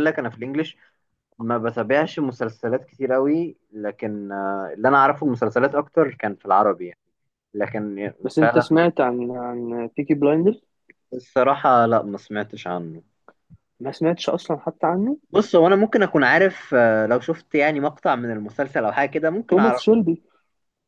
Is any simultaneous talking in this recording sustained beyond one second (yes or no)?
no